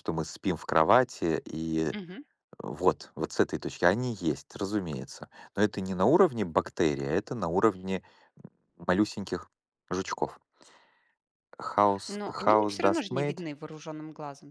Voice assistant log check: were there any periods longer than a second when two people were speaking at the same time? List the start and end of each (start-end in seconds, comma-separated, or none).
12.1-13.4